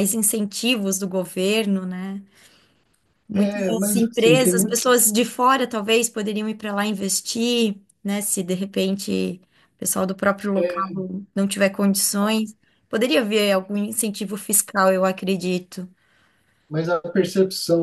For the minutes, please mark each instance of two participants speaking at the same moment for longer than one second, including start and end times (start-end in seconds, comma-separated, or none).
3.3-4.8